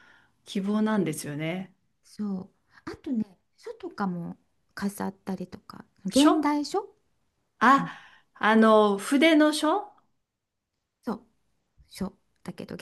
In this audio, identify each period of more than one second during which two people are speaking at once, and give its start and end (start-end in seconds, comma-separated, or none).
none